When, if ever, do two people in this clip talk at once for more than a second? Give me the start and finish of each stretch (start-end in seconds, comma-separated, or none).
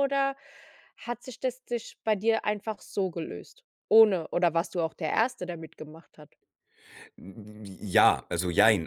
none